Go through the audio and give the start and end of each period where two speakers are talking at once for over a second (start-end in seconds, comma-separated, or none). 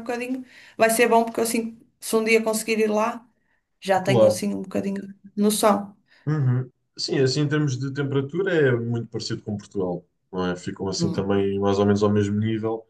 none